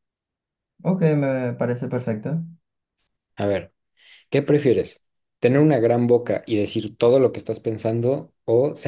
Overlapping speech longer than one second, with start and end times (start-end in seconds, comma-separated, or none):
none